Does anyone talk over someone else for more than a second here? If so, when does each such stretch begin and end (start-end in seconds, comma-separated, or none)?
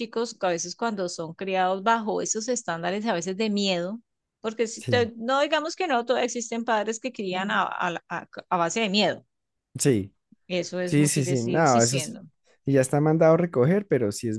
10.8-12.2